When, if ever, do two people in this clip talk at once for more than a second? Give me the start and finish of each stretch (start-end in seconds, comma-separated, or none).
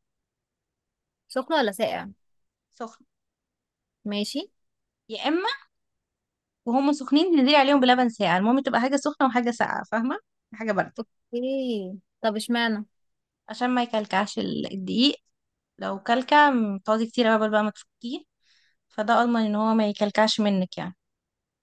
none